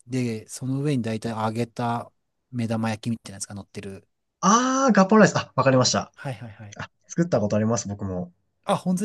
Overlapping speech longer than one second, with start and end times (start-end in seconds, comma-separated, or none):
none